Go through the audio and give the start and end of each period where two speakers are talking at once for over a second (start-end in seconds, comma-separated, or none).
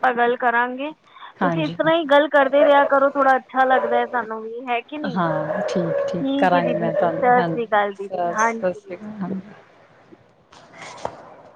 6.5-9.0